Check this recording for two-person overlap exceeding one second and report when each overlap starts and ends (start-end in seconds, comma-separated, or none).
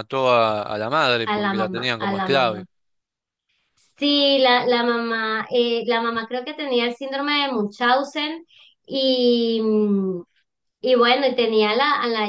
1.2-2.6